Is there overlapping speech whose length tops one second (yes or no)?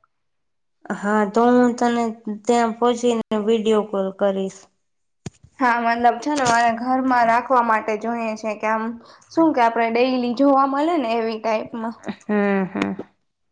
no